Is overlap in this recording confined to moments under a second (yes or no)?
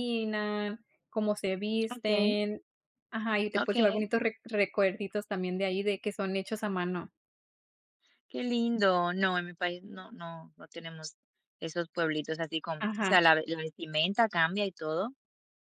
yes